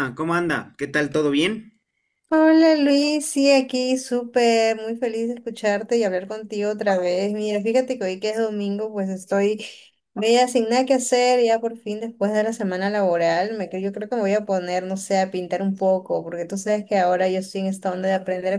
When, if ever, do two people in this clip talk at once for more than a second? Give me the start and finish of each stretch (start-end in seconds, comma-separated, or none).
none